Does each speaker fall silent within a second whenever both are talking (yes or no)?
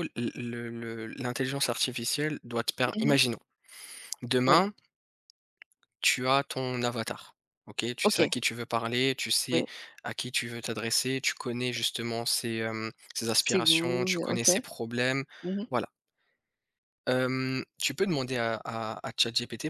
no